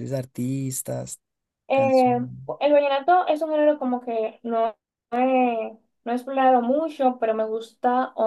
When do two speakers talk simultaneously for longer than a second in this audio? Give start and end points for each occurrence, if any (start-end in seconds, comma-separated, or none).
none